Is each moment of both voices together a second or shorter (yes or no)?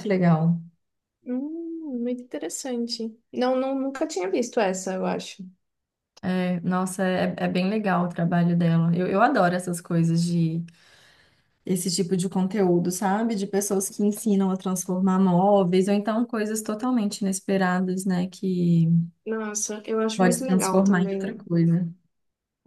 no